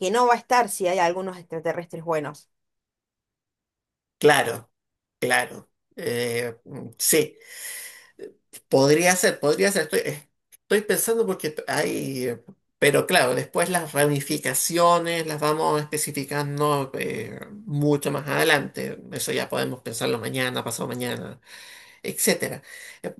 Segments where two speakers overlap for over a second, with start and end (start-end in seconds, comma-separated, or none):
none